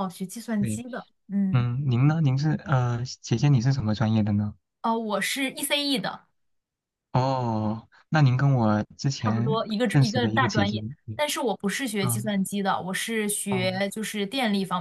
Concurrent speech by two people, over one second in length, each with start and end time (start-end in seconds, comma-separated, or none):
9.2-11.2